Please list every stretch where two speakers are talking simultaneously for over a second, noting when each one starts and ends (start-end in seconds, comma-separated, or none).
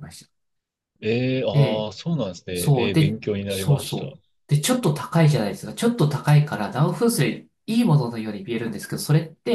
2.5-4.2